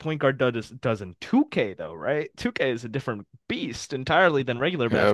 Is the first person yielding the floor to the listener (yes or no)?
yes